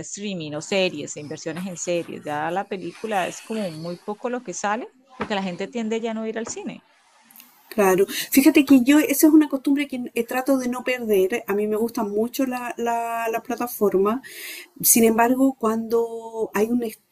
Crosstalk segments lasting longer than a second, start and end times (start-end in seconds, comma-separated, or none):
none